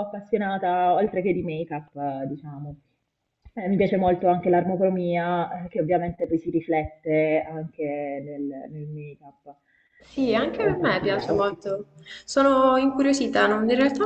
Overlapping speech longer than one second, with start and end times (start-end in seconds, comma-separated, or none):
10.1-11.6